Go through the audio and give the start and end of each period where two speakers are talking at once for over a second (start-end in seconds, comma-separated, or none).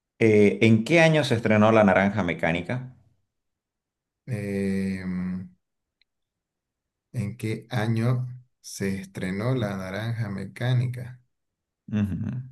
none